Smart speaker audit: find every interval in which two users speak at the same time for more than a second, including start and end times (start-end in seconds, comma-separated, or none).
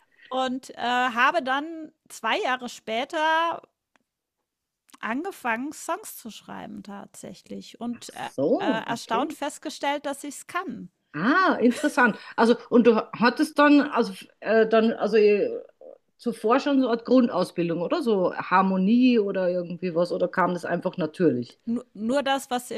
7.9-9.4